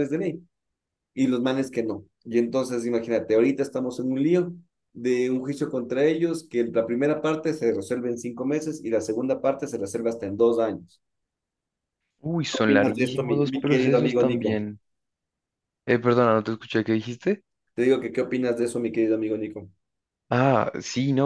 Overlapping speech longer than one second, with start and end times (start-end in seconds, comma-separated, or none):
12.5-14.7